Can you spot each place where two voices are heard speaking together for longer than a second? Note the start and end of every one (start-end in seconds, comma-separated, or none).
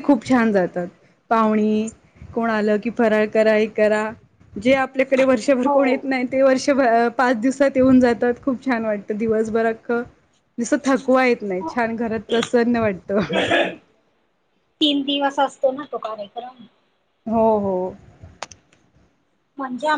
none